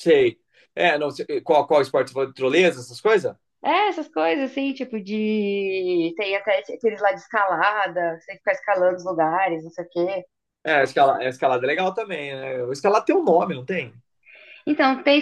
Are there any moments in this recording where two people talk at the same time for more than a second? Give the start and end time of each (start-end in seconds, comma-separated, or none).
none